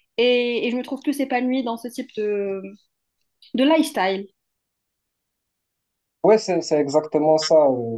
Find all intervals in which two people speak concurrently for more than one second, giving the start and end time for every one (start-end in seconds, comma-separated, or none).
none